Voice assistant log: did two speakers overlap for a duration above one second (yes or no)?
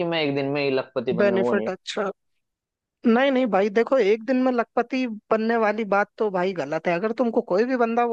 no